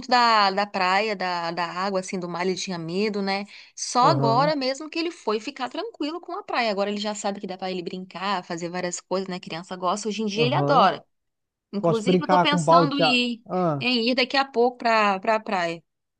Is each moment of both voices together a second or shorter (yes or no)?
no